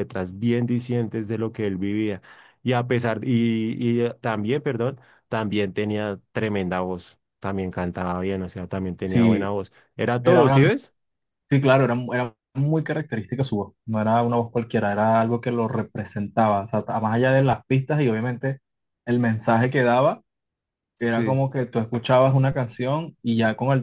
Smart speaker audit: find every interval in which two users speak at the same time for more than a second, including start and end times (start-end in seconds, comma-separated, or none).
none